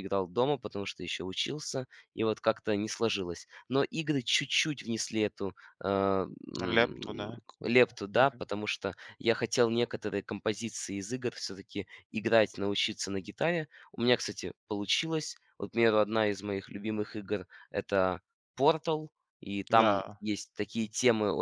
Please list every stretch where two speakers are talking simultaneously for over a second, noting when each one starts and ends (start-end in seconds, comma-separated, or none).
6.7-8.4